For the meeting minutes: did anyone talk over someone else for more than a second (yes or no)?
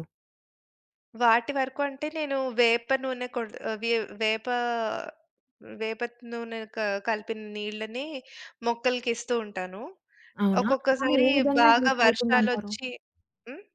yes